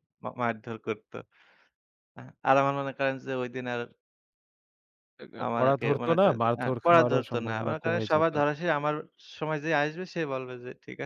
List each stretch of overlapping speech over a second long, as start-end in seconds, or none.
5.4-8.3